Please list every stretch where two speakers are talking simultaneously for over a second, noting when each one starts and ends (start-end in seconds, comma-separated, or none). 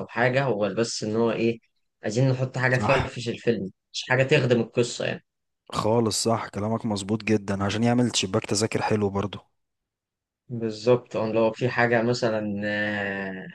none